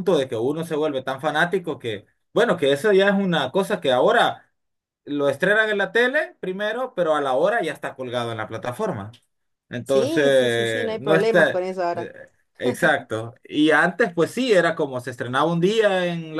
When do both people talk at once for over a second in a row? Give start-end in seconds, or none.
9.8-12.1